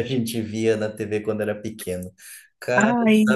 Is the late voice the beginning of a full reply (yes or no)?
no